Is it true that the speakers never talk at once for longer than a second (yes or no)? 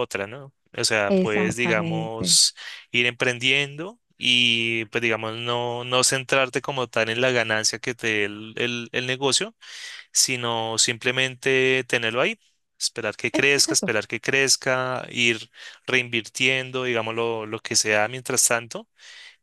no